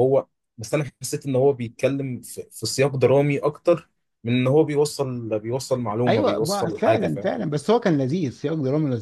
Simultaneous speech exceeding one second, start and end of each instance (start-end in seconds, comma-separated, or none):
6.1-7.3